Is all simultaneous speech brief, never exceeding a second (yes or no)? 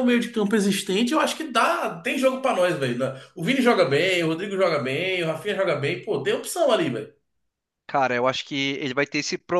yes